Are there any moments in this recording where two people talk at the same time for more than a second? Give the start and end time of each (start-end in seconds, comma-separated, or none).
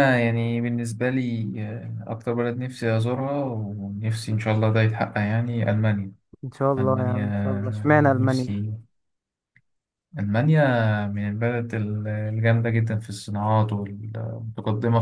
6.8-8.5